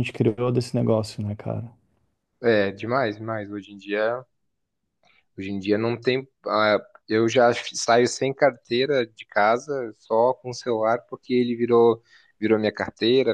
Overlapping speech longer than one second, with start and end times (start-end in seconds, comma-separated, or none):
none